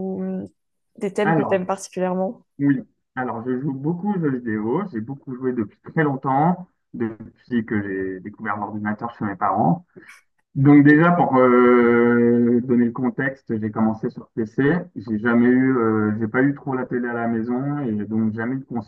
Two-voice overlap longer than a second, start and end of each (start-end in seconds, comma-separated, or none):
none